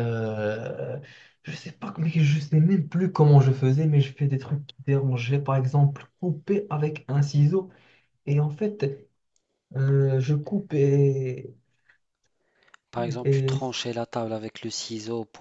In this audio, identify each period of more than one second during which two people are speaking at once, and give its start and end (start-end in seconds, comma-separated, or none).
none